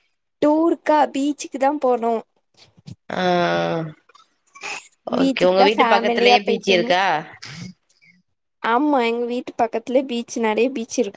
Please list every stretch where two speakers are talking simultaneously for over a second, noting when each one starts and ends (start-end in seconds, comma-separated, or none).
5.2-6.9